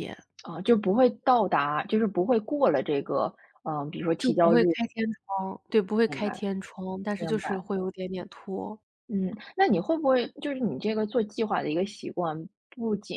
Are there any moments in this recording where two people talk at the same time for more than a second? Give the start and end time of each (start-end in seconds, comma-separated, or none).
none